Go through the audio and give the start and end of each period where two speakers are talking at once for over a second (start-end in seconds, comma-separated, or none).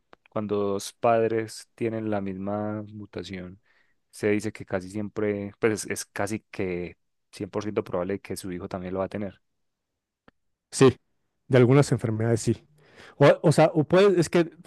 none